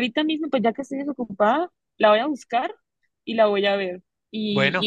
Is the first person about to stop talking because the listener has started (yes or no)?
no